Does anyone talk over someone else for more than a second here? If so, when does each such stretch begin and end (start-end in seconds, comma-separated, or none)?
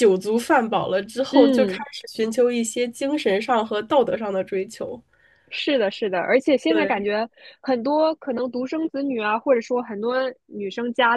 none